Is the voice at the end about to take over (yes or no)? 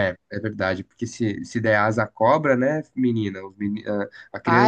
yes